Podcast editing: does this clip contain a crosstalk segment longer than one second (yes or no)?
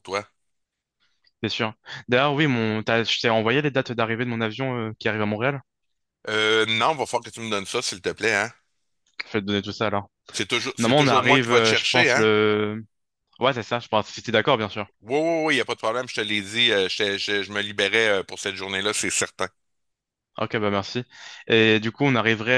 yes